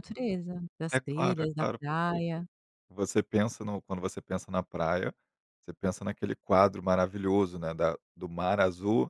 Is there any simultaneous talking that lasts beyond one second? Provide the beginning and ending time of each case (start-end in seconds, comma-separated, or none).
0.9-2.2